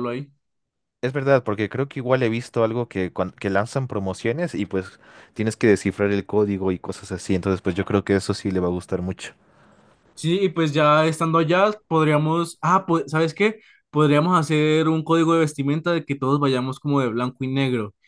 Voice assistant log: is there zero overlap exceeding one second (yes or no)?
yes